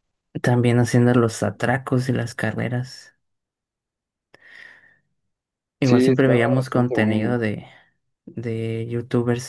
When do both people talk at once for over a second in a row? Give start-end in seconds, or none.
5.8-7.3